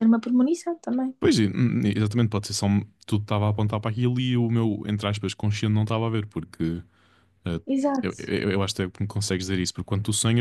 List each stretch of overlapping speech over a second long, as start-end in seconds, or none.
none